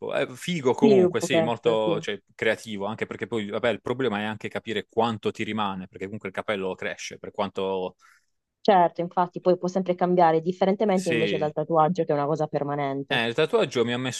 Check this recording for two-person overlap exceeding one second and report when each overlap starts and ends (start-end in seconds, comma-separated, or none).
0.7-2.0